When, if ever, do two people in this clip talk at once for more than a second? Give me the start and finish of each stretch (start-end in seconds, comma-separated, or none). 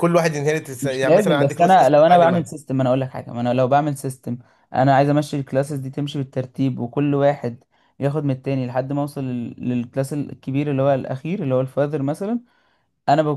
0.8-2.5